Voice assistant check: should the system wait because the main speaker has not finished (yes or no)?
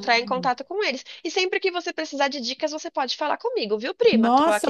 no